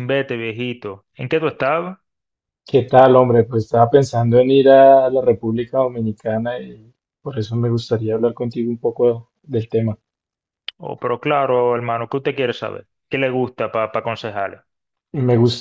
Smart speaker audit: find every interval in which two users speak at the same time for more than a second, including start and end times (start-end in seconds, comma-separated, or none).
none